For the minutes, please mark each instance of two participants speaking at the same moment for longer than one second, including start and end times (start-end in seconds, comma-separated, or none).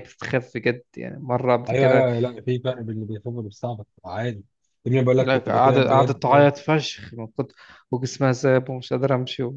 5.2-6.5